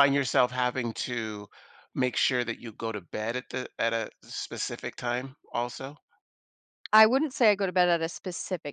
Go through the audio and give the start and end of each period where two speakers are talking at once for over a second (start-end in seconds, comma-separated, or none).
none